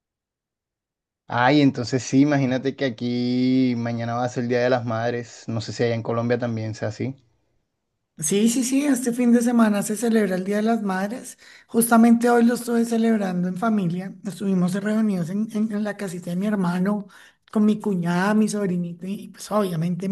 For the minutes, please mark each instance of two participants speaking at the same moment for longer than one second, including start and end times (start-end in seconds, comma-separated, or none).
none